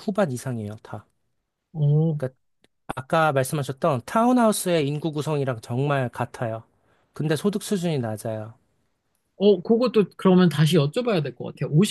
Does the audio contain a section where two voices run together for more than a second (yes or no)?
no